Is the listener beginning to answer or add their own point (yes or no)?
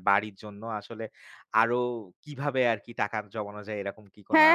yes